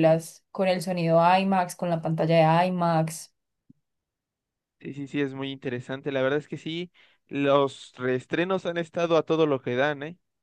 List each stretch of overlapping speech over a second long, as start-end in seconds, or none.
none